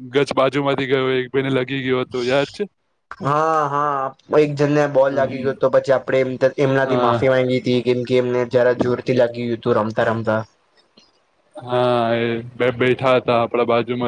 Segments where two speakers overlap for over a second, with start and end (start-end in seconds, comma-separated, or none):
none